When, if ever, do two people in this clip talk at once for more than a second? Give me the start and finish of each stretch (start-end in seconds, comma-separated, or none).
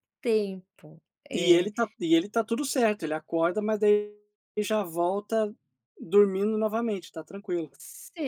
none